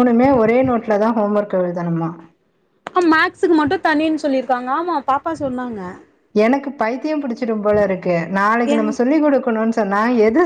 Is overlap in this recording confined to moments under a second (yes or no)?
yes